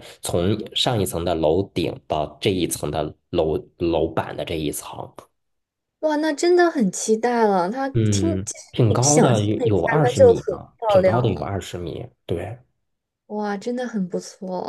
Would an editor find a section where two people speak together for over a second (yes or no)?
yes